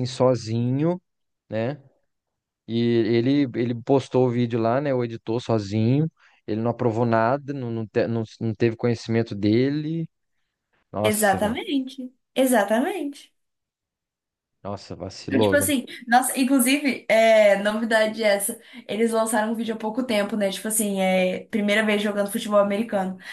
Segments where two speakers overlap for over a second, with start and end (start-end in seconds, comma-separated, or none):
none